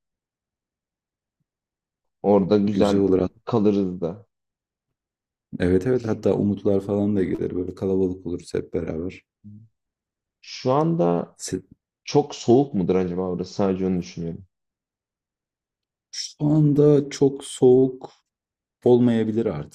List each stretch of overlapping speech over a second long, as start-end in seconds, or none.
none